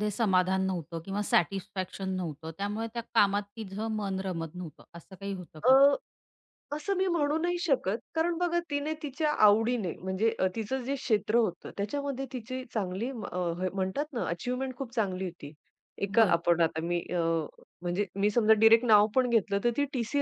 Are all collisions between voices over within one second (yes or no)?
yes